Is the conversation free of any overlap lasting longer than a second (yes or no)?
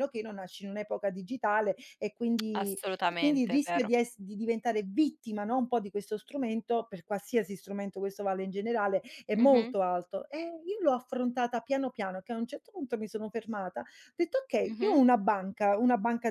no